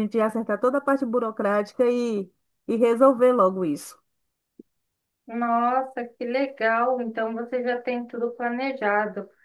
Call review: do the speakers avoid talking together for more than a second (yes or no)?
yes